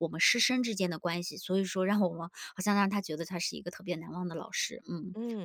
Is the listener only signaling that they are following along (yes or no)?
yes